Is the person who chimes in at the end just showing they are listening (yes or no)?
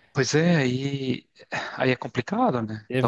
no